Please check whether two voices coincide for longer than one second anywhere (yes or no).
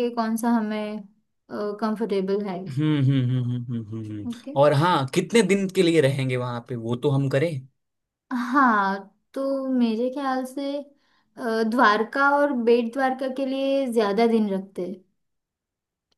no